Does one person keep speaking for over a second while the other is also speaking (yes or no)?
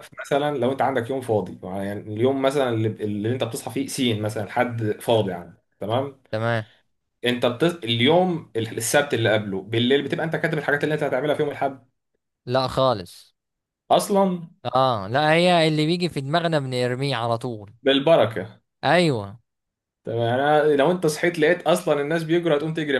no